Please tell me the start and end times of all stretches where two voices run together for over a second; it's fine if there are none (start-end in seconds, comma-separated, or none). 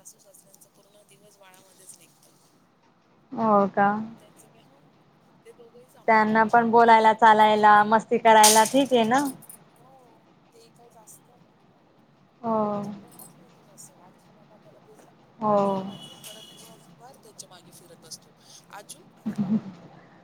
6.1-7.8